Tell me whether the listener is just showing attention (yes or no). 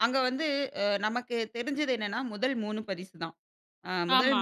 yes